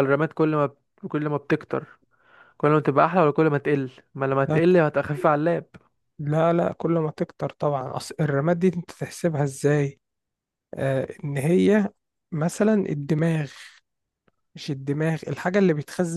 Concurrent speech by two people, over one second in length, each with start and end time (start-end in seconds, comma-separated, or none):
none